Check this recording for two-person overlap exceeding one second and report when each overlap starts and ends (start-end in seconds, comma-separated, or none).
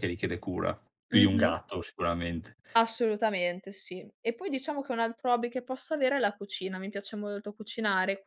none